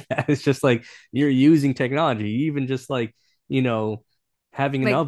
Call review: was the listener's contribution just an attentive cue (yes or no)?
yes